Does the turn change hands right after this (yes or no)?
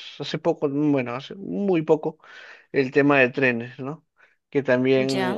no